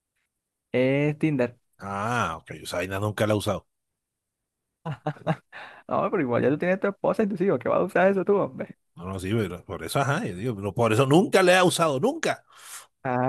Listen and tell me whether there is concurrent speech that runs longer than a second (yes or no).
no